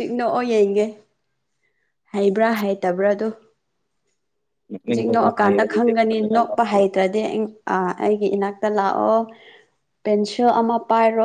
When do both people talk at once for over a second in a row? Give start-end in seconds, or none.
4.8-6.8